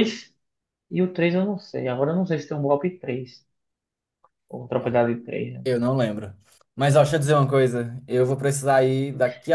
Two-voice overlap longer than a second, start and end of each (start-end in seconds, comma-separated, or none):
none